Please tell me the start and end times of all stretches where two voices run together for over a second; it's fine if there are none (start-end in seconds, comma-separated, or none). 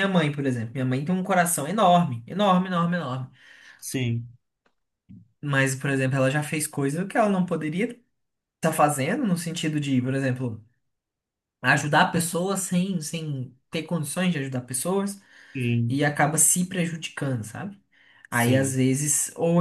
none